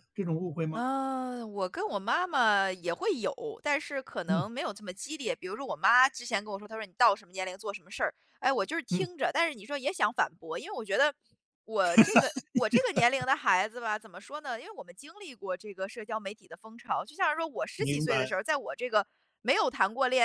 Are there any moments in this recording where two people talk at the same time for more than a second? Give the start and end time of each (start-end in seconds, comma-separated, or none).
none